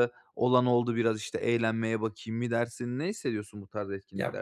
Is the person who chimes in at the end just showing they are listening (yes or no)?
no